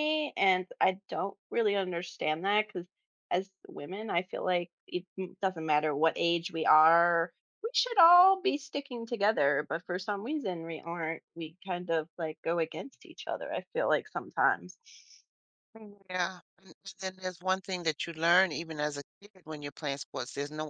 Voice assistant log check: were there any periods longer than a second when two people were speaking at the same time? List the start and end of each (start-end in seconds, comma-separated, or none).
none